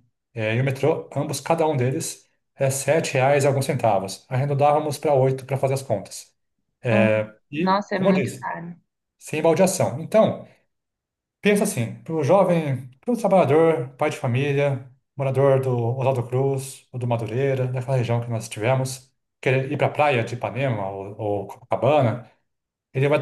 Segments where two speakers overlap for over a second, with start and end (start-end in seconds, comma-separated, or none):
6.9-8.5